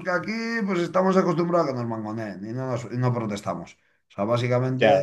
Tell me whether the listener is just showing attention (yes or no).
yes